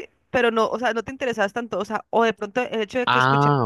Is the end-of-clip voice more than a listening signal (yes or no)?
no